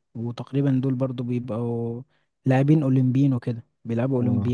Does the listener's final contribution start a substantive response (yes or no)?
yes